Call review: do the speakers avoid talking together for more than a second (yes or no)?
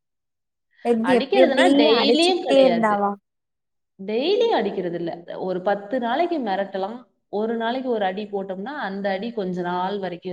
no